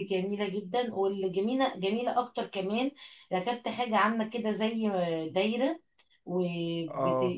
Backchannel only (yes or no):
yes